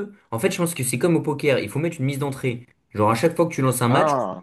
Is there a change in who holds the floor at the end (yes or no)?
no